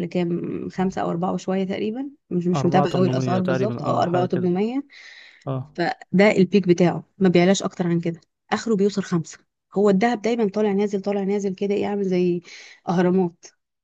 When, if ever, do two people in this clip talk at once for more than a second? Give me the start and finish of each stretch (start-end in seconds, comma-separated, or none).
2.5-4.5